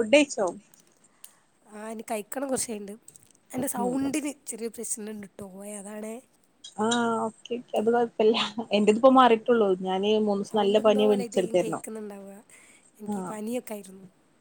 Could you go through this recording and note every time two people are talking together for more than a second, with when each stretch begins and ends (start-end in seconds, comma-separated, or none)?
10.5-11.8